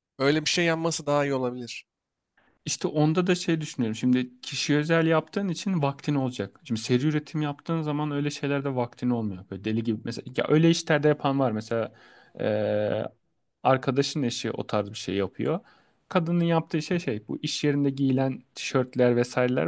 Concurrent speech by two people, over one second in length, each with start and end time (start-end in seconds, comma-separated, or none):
none